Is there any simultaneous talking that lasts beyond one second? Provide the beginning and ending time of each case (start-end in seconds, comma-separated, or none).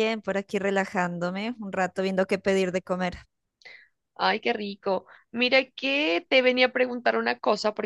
none